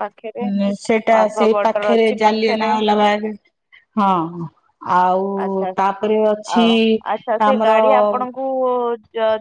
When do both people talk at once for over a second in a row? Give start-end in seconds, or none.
1.1-2.7